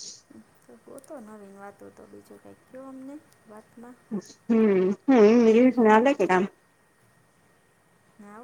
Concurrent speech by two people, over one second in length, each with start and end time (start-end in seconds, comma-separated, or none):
none